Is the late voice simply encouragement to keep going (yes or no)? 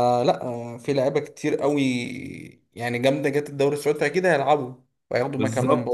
no